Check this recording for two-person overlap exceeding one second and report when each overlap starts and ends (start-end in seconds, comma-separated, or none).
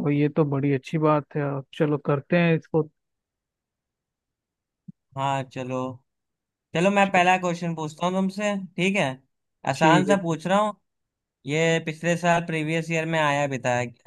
none